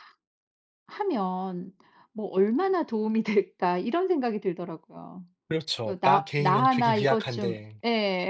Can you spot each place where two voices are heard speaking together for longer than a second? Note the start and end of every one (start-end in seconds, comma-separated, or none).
5.8-7.8